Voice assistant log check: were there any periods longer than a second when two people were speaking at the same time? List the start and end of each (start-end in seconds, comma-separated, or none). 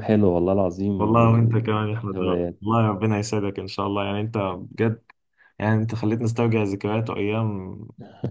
1.0-2.6